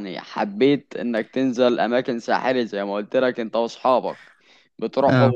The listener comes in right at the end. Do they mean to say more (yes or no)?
no